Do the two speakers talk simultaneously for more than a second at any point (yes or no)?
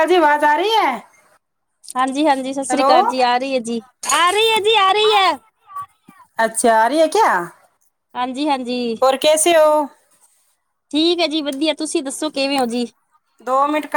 no